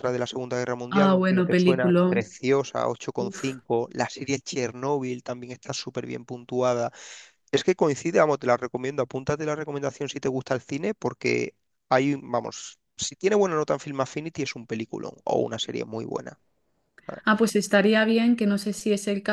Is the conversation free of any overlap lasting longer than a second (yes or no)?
no